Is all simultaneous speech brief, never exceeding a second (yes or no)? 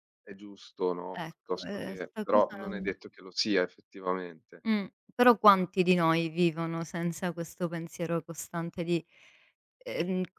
no